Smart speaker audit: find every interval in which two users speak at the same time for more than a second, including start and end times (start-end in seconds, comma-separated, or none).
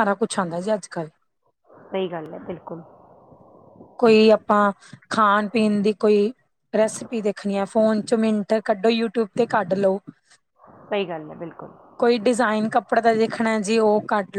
none